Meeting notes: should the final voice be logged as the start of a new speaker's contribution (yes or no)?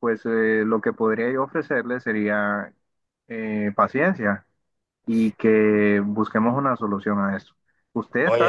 yes